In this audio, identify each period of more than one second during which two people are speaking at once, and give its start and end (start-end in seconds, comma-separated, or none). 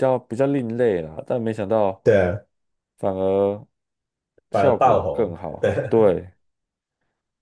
4.5-6.1